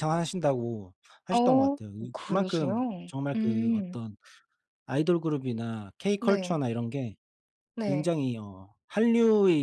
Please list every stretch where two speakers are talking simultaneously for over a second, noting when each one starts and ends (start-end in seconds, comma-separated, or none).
1.3-4.0